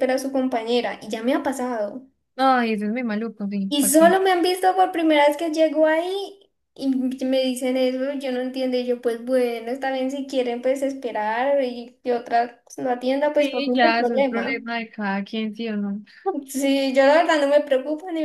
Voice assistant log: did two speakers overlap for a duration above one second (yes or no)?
yes